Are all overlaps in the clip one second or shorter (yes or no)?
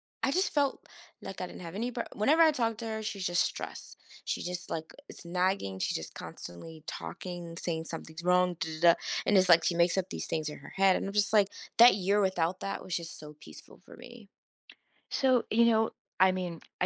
yes